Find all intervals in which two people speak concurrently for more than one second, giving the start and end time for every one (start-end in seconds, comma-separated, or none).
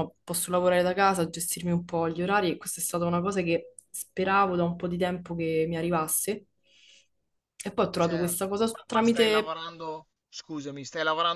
8.0-9.5